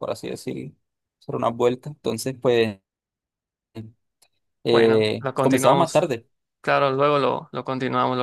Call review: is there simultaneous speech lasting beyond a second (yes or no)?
yes